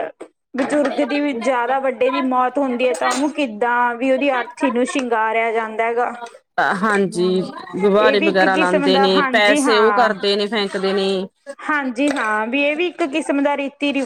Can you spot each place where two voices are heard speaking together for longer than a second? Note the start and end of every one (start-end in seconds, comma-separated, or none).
8.0-10.1